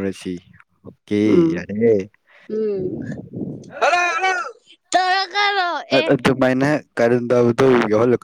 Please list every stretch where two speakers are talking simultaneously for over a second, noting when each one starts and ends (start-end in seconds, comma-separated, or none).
none